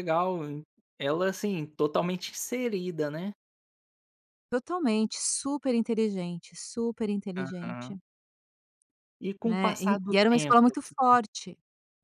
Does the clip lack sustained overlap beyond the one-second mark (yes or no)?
no